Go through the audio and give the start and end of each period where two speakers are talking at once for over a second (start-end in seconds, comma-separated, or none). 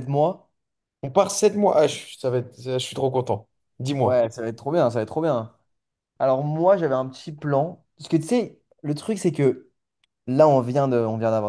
none